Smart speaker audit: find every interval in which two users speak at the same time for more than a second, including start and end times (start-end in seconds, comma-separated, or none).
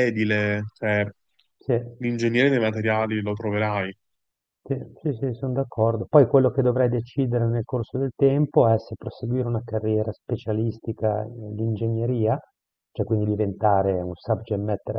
none